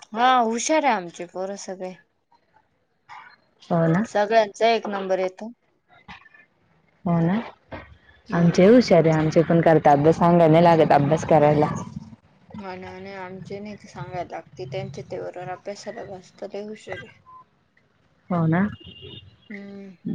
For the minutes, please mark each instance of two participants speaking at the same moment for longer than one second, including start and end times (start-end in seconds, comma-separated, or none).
none